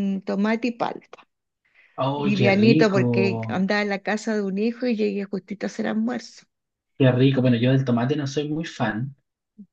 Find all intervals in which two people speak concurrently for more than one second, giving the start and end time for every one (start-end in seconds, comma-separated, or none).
2.1-3.7